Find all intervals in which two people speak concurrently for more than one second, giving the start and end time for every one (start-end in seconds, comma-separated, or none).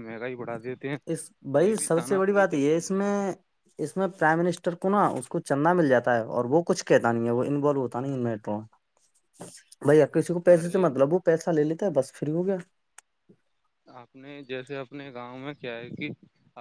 1.6-3.1